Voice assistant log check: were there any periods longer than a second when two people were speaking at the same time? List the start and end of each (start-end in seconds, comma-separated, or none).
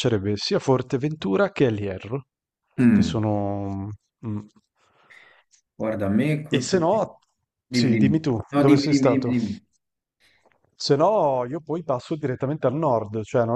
7.7-9.3